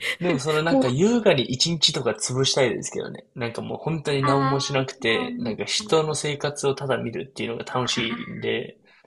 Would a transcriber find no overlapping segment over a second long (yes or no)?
no